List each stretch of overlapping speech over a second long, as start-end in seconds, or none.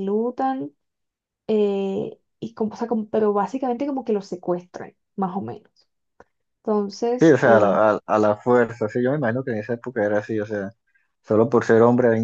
none